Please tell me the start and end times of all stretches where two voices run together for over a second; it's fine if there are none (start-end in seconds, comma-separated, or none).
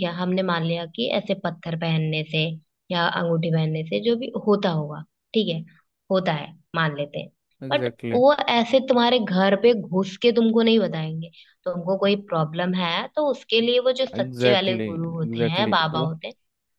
14.2-16.1